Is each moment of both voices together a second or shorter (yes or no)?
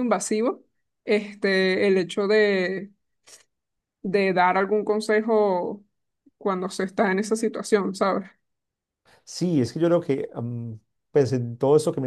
yes